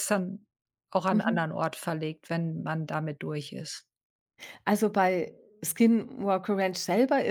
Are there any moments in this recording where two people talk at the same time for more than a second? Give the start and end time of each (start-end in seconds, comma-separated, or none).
none